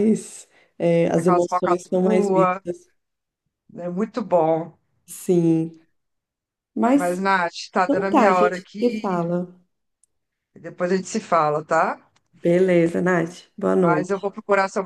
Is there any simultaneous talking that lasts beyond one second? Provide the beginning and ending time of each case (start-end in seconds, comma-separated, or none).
1.1-2.6, 7.8-9.2